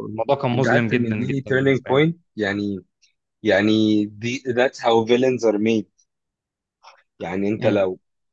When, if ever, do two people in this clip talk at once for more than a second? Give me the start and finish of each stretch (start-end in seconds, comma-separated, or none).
0.5-2.0